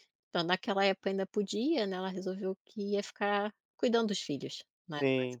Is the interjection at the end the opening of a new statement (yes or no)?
yes